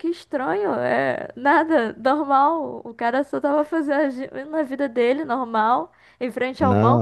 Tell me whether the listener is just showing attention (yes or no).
yes